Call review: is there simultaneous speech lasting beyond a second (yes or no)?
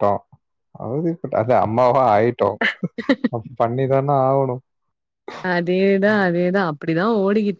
no